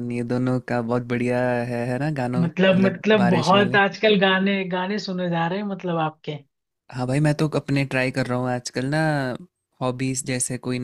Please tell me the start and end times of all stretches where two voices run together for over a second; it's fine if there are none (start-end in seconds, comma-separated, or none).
2.4-3.8